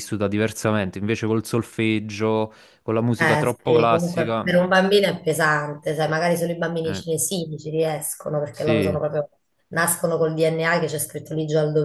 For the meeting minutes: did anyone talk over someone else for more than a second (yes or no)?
yes